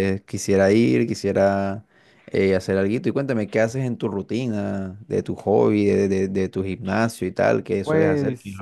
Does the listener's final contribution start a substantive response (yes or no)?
yes